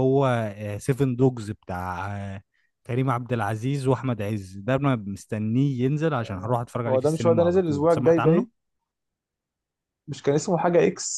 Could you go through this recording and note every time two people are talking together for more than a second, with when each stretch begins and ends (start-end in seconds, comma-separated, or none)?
6.2-8.5